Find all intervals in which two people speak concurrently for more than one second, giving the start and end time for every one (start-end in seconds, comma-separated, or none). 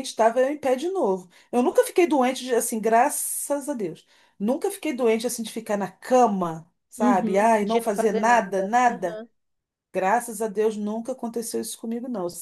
7.0-9.2